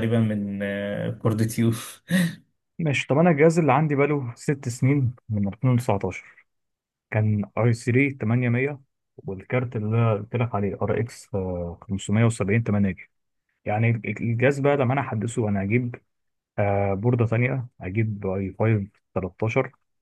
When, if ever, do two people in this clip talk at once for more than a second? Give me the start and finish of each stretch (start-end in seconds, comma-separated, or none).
none